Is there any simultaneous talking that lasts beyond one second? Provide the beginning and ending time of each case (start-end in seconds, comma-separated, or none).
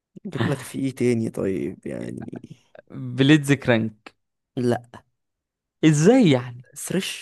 none